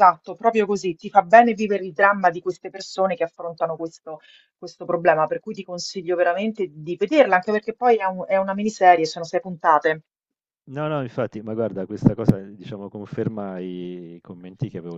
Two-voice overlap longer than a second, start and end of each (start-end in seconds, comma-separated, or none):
none